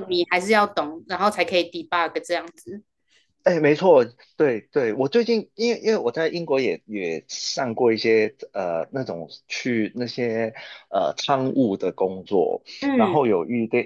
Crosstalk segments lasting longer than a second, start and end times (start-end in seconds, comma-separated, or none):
none